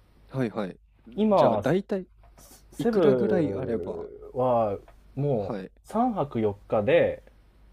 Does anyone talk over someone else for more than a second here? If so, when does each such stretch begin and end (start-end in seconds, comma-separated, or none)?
2.8-4.1